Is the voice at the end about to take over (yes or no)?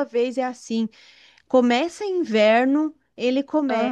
no